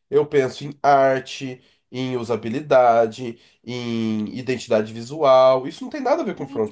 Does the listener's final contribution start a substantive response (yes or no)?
yes